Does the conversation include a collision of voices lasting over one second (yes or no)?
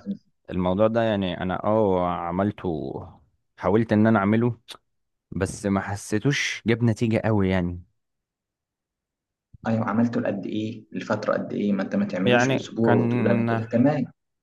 yes